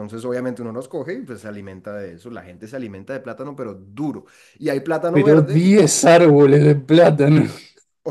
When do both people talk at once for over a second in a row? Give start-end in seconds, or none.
none